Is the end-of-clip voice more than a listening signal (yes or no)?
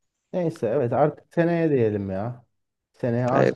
no